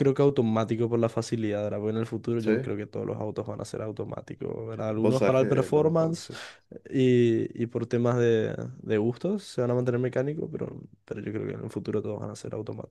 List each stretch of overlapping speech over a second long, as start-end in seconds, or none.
5.0-6.3